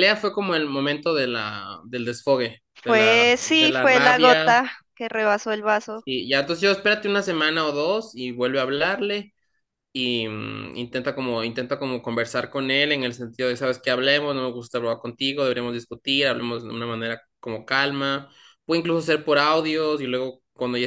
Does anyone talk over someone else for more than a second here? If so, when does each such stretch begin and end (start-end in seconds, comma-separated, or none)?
2.8-4.6